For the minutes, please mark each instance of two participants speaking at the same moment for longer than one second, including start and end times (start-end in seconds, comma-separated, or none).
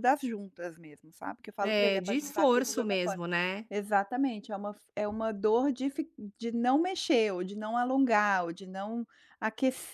1.6-3.2